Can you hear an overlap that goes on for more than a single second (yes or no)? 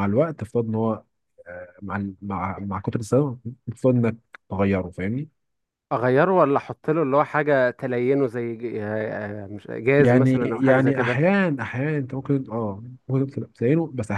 yes